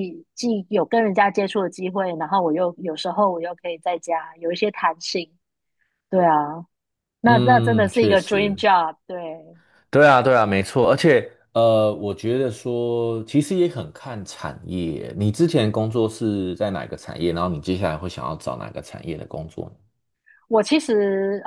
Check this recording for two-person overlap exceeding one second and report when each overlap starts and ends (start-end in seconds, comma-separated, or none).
7.2-8.6